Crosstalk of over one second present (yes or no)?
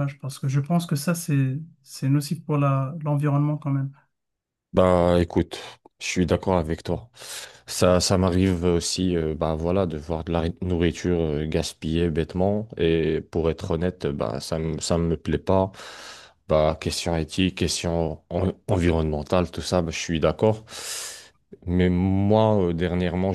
no